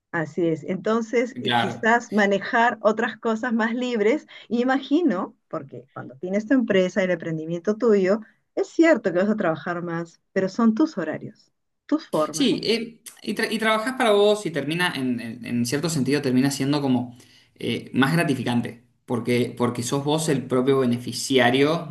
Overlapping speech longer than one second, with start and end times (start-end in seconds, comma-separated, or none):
none